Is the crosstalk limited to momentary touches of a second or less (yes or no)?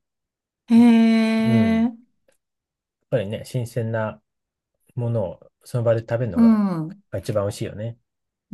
yes